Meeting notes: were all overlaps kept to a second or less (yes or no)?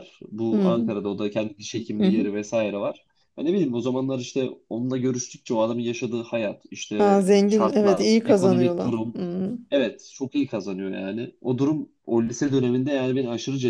no